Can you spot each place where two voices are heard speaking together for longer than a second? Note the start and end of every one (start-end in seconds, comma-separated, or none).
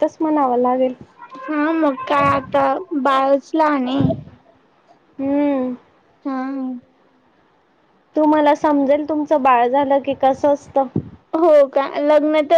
none